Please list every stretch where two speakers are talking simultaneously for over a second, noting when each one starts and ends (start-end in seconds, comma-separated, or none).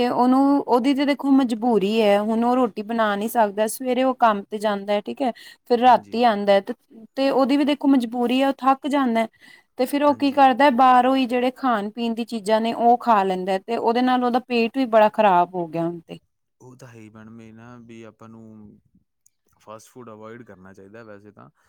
none